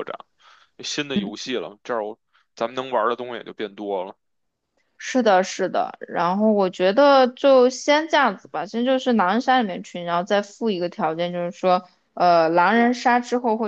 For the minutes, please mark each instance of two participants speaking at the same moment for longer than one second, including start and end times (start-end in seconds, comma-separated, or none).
none